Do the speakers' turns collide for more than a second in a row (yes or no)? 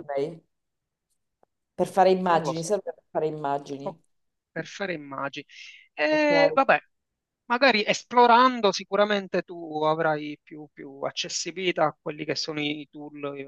no